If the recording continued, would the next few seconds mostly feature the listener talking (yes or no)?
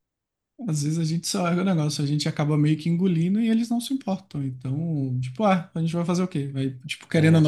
no